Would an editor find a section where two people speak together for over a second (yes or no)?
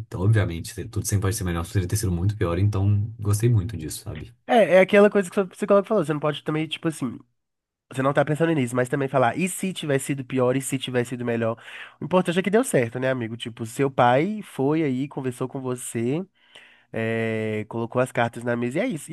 no